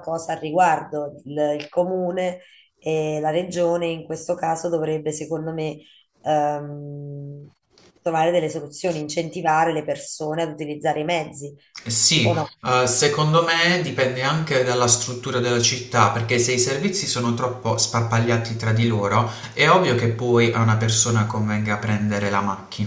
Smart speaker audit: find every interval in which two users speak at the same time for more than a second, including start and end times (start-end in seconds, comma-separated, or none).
none